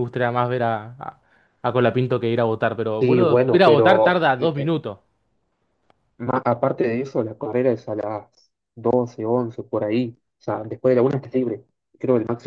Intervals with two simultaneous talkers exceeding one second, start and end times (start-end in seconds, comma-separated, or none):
3.0-4.7